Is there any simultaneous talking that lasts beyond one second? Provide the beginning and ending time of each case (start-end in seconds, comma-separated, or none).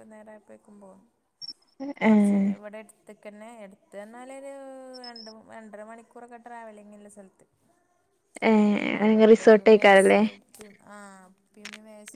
8.7-10.2